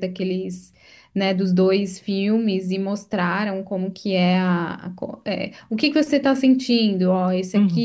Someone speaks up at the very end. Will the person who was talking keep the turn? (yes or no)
yes